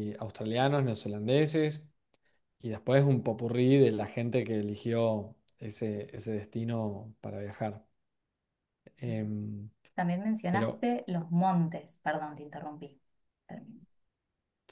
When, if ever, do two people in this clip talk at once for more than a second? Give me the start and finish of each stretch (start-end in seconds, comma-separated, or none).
none